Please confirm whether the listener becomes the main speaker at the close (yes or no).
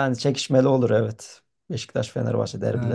yes